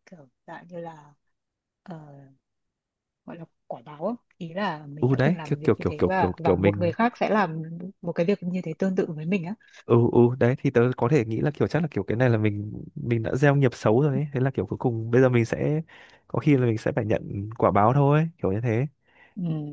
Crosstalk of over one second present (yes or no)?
yes